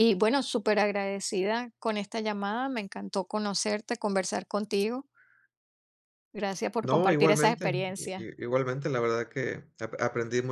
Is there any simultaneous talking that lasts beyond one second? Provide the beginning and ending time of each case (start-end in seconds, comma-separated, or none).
6.8-8.3